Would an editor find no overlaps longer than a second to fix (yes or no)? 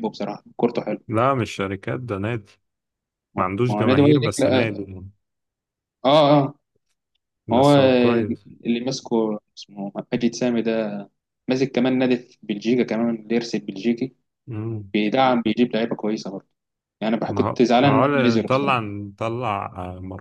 no